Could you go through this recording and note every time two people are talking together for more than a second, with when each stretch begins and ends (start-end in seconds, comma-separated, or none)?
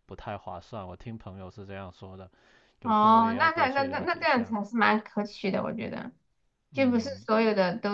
2.8-4.5